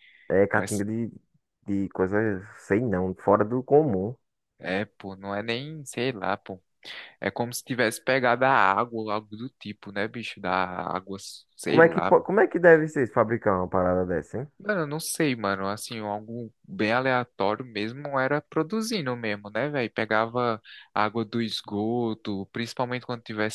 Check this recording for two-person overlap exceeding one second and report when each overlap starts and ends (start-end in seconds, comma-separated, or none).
none